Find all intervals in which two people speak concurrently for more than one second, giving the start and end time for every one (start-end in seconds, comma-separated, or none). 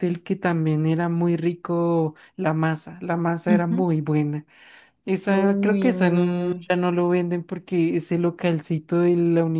5.3-6.7